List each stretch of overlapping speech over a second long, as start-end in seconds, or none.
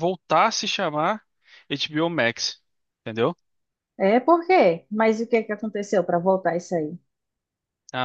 none